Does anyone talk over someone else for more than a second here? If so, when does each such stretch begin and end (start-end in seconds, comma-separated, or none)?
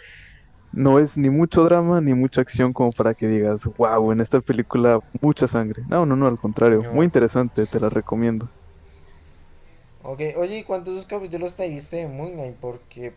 none